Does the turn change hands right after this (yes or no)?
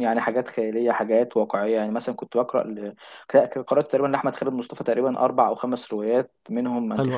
no